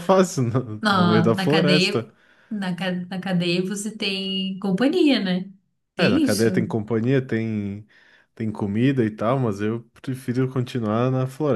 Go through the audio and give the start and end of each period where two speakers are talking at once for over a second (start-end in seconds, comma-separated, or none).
0.8-2.1